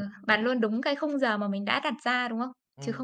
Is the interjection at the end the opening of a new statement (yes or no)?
yes